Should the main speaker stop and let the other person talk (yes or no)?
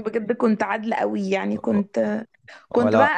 no